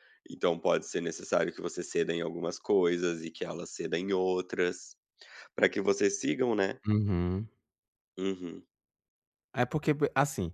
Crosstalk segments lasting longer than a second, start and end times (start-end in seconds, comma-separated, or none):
none